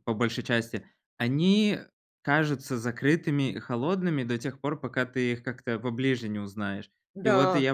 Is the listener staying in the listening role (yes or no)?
yes